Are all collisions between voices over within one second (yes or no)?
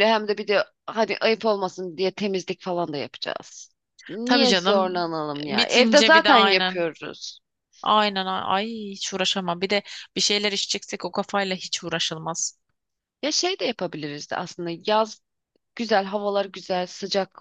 no